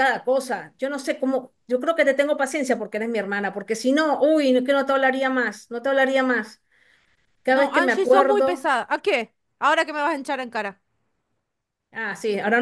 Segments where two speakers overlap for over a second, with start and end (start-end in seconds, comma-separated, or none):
7.5-8.7